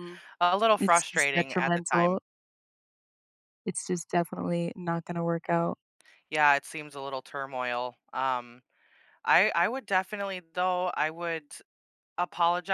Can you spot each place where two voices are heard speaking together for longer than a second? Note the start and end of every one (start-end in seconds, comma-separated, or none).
0.8-2.2